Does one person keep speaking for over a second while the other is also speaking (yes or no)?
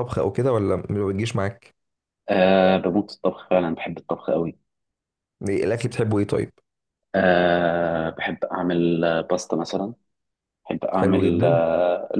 no